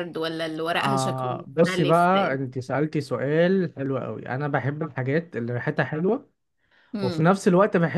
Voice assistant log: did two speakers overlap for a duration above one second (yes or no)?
yes